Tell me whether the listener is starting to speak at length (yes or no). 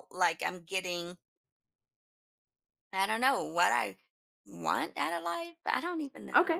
yes